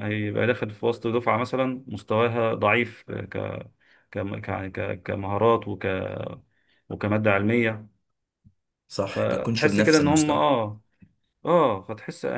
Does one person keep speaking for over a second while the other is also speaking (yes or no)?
yes